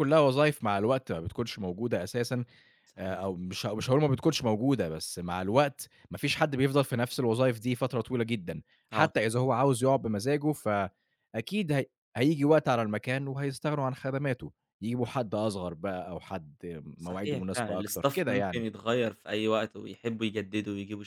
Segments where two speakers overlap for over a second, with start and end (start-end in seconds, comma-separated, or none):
17.0-18.6